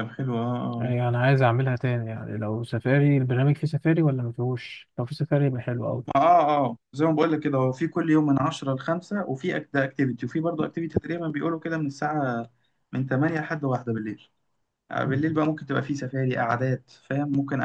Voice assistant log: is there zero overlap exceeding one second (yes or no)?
yes